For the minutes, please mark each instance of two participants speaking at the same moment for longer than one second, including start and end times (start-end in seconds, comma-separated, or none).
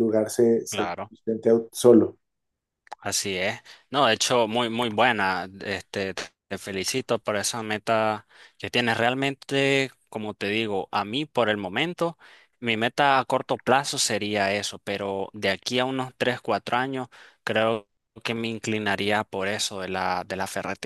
none